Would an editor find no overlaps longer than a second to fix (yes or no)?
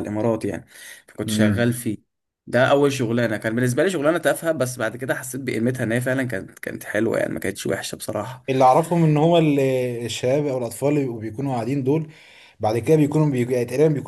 yes